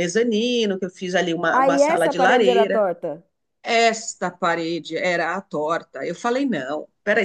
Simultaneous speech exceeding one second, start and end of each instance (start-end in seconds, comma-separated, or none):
1.5-2.8